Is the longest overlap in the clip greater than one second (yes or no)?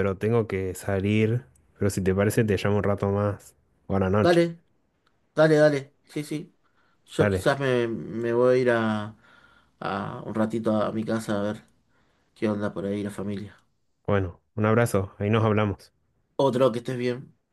no